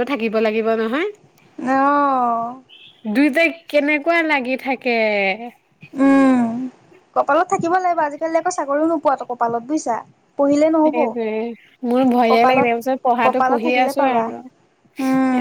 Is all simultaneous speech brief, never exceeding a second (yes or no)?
no